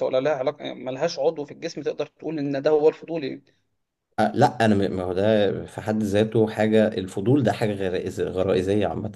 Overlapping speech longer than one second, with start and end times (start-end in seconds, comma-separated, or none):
none